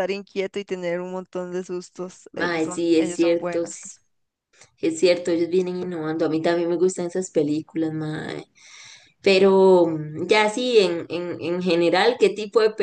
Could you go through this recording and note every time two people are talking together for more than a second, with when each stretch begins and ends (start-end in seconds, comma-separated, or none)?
2.3-3.8